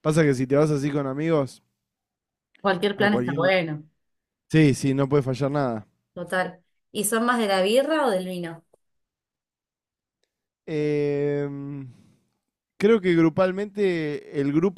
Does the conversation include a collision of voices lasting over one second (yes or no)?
no